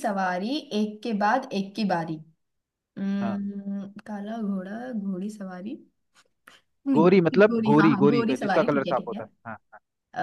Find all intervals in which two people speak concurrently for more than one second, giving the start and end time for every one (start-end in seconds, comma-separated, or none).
6.9-9.2